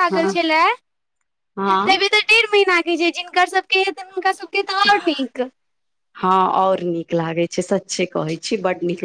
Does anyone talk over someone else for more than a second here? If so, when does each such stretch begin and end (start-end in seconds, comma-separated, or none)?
none